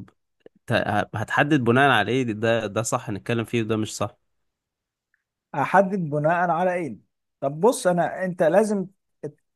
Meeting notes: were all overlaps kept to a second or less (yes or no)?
yes